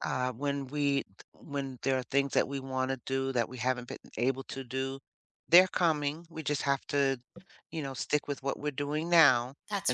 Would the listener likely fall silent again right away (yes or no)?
yes